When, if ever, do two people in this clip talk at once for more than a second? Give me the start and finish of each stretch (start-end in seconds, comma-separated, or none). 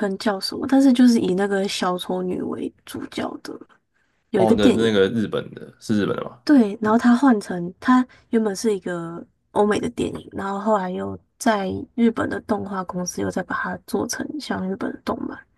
none